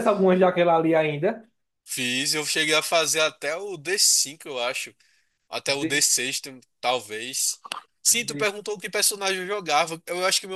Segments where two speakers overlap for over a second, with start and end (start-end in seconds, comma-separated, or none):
none